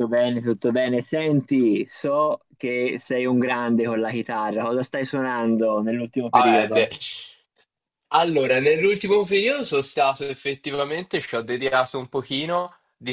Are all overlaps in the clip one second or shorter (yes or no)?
yes